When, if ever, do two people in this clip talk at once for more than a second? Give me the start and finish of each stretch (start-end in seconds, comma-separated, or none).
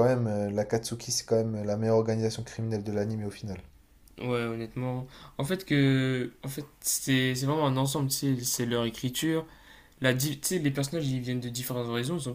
none